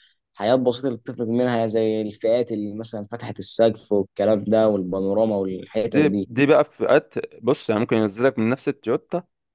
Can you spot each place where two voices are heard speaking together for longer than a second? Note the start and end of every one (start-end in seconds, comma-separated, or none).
none